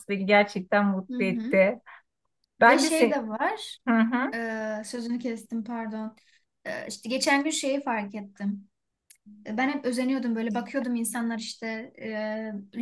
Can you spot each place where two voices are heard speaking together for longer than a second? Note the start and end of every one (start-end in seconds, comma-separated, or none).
none